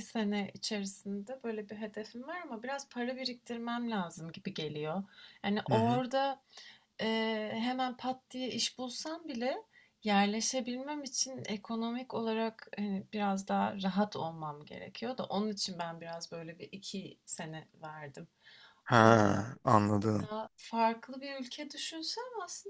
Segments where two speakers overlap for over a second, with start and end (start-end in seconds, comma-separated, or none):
none